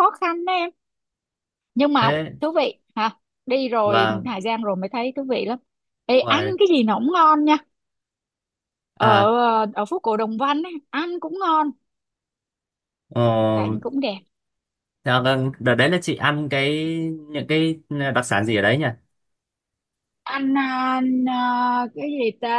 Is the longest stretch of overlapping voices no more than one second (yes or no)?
yes